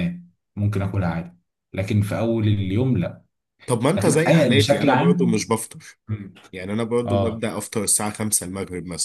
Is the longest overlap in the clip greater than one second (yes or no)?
yes